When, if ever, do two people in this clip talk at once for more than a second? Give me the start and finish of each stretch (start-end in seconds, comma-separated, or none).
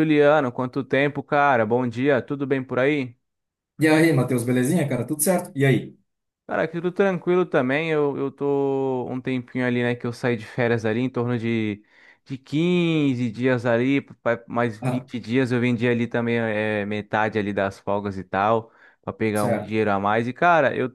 none